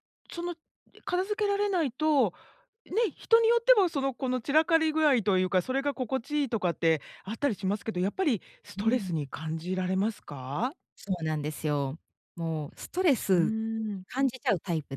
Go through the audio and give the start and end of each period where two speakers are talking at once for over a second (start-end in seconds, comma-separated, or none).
none